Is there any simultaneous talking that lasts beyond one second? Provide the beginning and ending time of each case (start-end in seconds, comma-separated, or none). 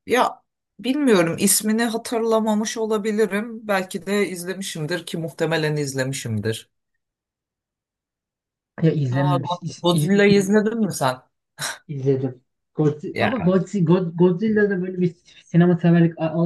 9.1-10.3